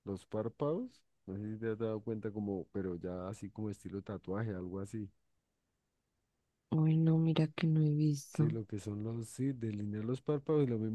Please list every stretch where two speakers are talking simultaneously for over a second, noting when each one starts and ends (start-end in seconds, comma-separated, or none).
none